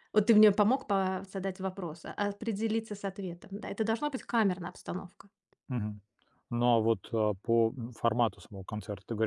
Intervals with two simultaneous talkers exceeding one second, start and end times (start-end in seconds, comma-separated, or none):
none